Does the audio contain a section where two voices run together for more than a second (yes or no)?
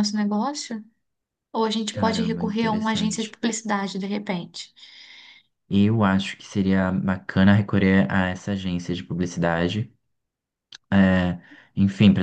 yes